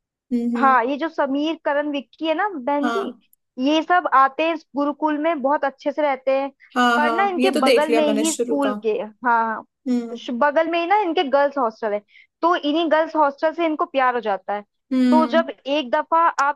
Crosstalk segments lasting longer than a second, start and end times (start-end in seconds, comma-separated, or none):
7.0-8.7